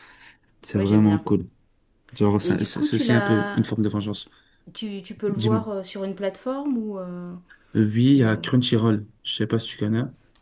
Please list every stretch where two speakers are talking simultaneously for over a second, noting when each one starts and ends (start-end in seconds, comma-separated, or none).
2.4-3.6